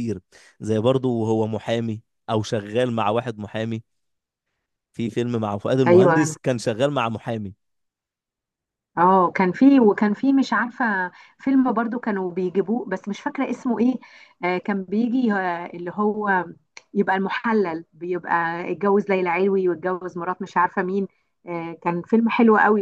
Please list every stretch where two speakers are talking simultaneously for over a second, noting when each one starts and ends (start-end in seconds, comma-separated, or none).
none